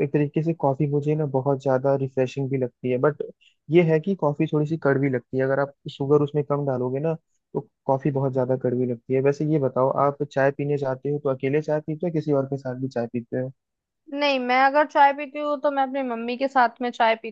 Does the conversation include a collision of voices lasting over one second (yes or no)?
no